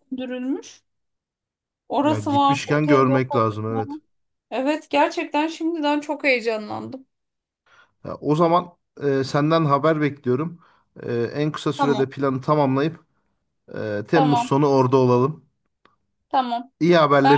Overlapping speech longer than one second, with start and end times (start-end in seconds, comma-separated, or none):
2.0-4.0